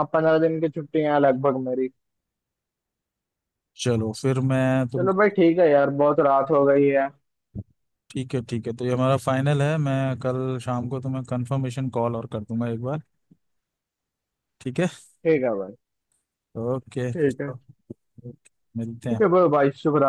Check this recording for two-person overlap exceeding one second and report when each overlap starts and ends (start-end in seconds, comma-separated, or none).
none